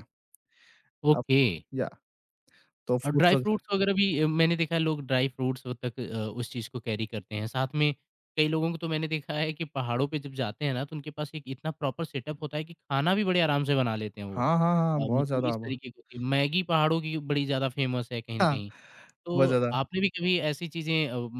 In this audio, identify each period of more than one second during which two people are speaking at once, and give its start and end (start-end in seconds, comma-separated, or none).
14.4-15.6